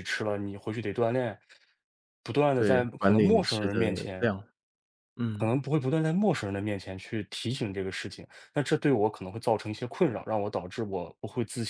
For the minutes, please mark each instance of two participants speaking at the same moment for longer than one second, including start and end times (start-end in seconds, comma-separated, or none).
2.5-4.3